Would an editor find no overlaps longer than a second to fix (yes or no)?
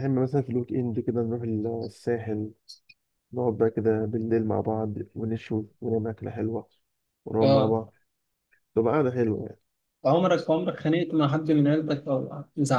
yes